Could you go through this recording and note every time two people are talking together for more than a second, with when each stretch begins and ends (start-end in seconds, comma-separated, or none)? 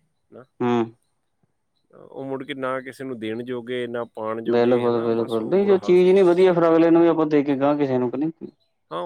none